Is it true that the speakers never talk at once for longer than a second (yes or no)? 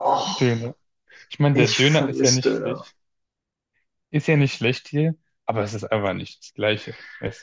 no